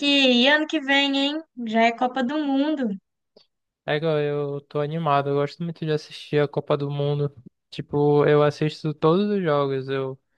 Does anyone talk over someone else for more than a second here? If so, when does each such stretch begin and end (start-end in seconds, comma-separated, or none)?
none